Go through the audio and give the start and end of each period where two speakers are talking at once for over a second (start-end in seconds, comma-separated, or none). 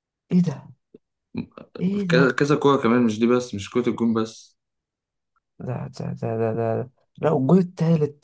none